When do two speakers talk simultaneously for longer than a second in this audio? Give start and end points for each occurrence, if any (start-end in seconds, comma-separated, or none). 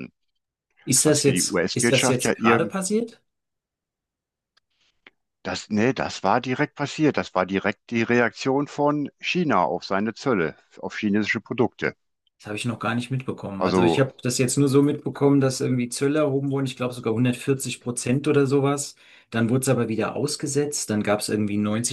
1.0-2.6